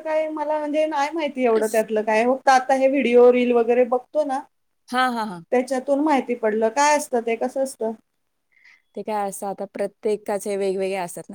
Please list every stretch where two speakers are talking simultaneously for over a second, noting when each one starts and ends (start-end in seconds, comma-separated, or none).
none